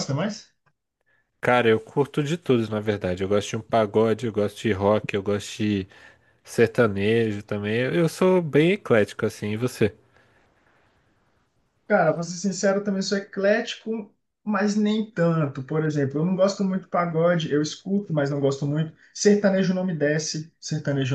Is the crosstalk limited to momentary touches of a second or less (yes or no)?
yes